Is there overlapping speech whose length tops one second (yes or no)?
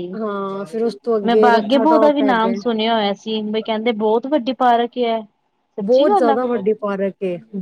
yes